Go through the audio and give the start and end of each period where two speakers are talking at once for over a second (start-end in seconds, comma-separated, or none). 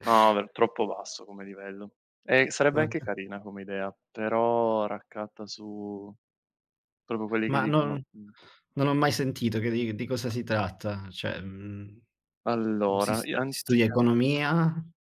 13.0-14.4